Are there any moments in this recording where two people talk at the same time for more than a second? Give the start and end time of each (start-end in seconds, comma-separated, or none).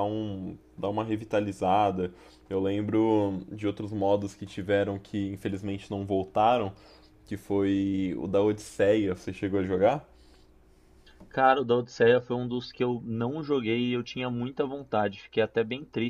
none